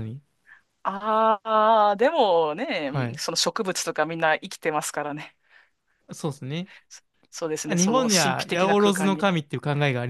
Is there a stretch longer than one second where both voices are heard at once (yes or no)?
yes